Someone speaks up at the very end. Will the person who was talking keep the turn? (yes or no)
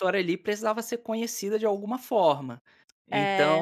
yes